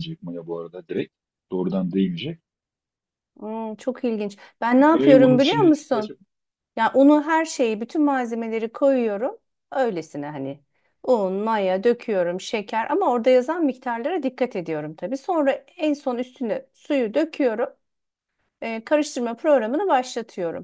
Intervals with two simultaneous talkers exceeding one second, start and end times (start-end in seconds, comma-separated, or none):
4.9-6.2